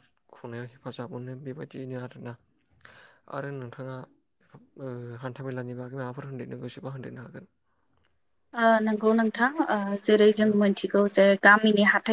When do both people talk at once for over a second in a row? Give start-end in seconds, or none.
none